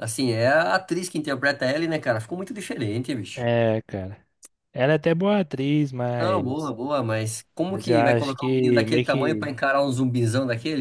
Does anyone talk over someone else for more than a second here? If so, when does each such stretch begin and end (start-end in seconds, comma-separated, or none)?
7.7-9.6